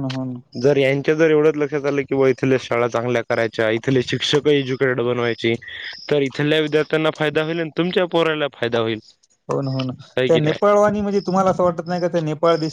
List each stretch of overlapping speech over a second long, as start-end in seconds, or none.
none